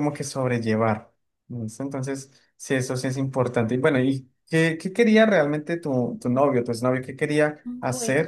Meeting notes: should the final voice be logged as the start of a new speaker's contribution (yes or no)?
no